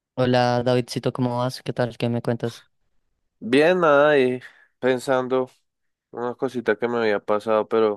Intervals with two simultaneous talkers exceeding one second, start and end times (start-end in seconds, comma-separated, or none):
none